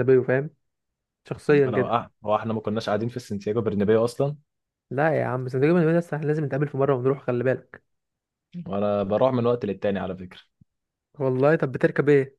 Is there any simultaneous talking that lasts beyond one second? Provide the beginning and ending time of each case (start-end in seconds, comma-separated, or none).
none